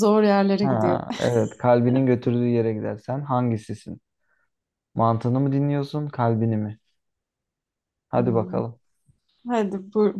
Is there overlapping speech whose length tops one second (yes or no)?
no